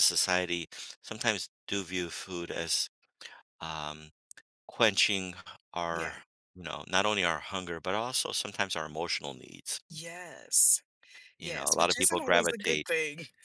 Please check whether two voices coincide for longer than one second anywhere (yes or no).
yes